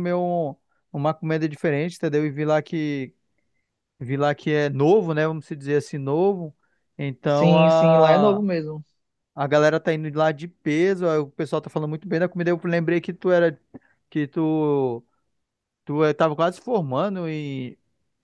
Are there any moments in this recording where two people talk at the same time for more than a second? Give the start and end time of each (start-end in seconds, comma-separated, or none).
none